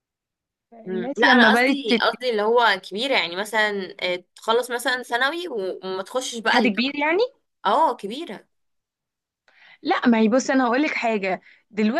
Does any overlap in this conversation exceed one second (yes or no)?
yes